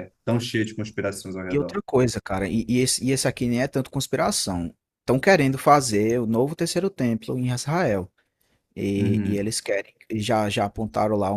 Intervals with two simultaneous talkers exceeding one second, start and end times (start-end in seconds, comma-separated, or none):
none